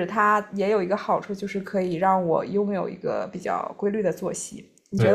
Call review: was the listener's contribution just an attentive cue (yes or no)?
no